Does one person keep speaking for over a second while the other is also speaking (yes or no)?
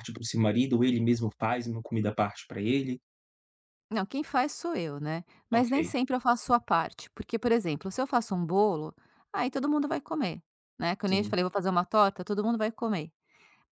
no